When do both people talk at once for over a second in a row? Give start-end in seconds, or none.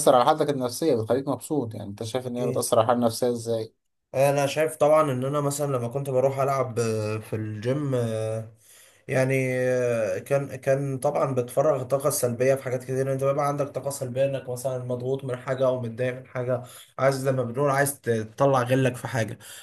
none